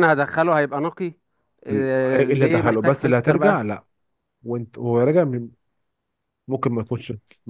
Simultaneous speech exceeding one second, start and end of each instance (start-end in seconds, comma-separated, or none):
2.2-3.6